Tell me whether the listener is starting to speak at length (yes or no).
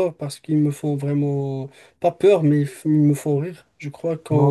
yes